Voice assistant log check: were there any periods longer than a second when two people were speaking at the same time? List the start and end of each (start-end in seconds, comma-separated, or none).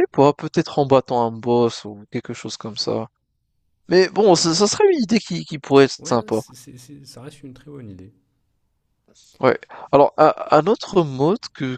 none